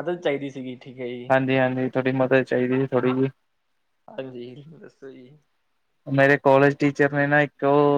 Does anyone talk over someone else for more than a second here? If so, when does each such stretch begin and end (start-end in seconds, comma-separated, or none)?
none